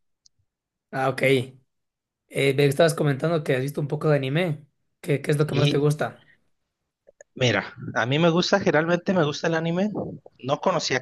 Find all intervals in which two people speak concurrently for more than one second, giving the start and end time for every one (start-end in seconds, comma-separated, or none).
none